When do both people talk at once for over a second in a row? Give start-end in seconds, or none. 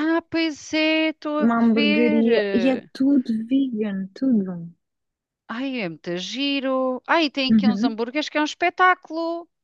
1.4-2.9